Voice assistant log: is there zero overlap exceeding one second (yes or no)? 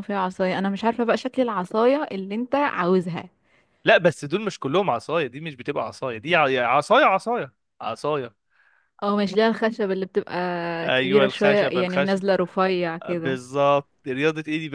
no